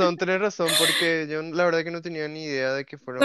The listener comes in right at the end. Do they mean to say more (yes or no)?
yes